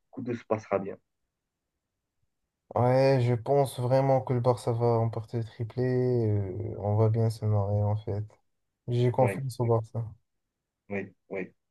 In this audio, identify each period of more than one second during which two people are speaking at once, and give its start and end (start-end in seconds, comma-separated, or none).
none